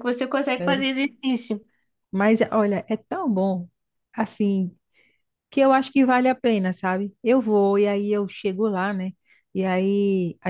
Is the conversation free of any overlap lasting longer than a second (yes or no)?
yes